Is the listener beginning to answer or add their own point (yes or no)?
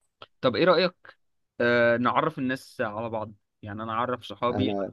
no